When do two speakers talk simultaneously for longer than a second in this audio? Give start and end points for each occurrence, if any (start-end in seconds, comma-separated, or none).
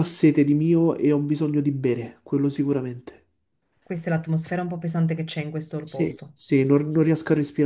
none